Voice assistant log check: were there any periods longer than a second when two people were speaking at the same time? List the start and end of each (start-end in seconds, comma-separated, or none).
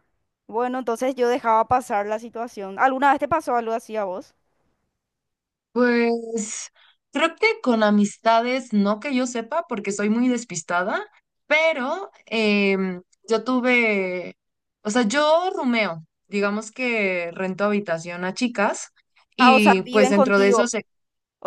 19.4-20.7